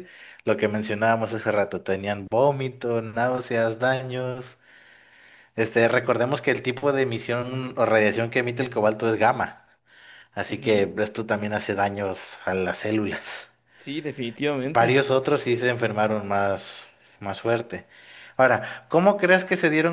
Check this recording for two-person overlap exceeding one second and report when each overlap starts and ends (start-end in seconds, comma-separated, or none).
none